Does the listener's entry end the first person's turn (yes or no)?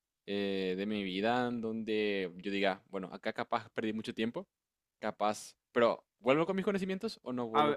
yes